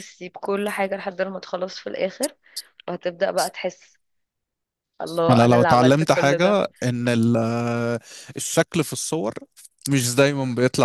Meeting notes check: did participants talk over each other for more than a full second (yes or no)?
yes